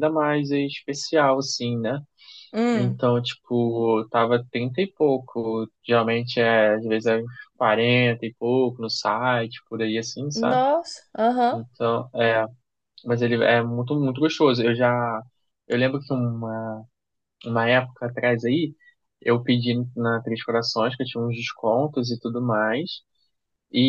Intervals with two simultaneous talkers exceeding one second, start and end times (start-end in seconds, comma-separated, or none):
none